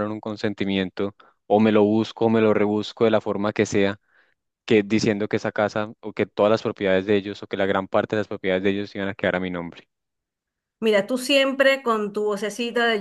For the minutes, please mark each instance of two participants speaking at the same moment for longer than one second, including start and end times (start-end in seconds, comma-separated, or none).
none